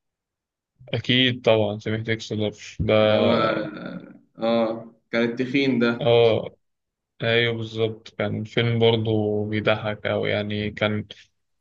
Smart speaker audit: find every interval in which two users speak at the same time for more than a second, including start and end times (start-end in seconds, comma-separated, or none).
none